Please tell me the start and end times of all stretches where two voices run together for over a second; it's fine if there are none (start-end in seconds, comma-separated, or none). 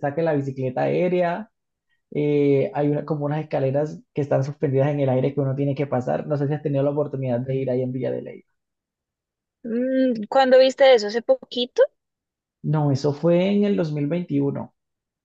none